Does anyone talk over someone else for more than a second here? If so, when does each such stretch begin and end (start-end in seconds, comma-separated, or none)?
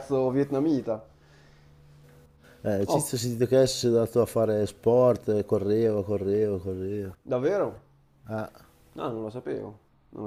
none